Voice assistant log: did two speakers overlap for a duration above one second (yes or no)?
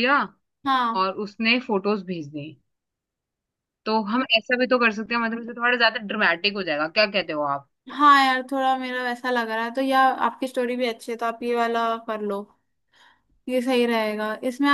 no